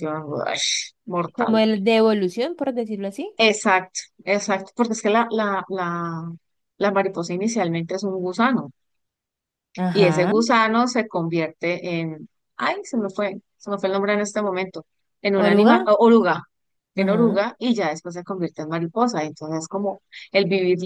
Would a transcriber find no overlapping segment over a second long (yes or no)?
yes